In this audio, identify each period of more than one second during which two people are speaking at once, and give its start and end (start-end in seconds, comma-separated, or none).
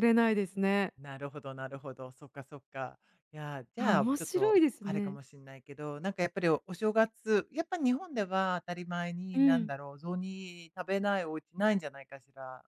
3.8-5.2